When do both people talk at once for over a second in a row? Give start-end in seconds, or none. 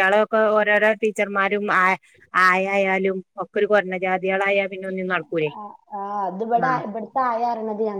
none